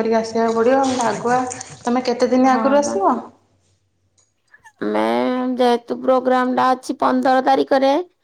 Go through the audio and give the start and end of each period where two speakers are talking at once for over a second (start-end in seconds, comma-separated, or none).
none